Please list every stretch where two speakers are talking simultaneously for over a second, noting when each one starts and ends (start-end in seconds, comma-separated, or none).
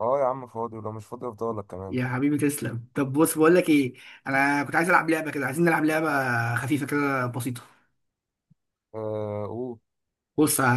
none